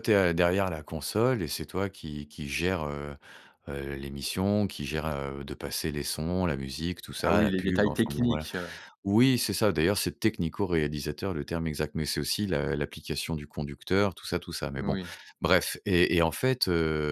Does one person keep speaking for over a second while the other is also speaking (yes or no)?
yes